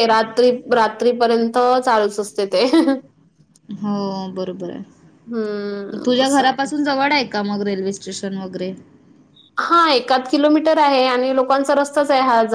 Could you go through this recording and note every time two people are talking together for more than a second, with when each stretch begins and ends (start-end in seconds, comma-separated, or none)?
5.3-6.7